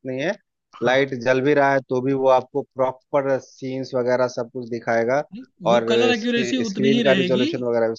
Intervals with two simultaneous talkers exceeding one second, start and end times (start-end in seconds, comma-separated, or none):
5.7-7.4